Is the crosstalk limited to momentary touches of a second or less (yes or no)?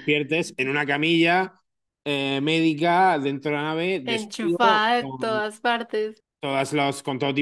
no